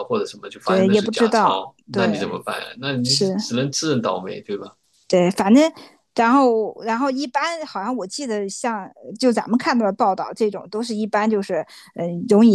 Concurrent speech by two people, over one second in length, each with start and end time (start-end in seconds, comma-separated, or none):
0.6-2.2